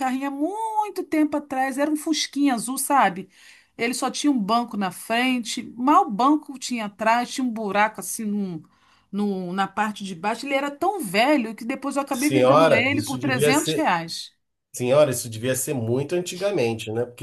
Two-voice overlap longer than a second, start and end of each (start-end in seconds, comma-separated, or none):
12.1-13.9